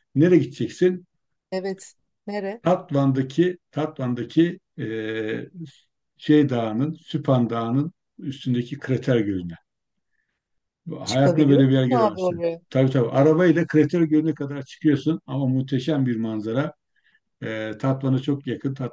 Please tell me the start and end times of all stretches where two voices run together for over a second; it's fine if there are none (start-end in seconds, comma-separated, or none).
11.0-12.6